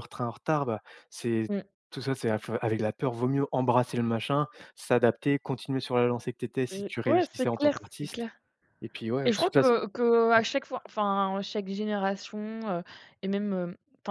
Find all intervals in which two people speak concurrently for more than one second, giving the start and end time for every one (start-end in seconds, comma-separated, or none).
6.7-8.2